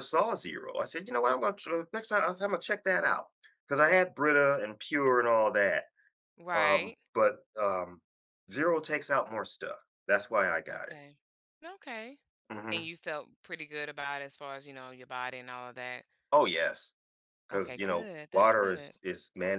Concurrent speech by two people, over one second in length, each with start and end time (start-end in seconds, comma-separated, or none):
17.5-18.9